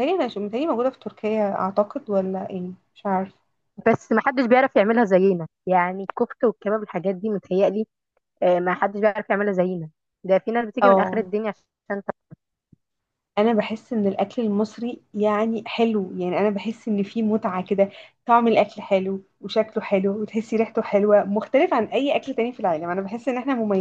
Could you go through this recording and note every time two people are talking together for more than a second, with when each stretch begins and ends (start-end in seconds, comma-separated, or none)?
none